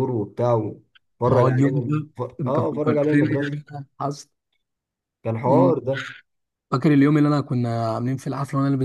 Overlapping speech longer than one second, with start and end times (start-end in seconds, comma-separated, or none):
1.3-3.6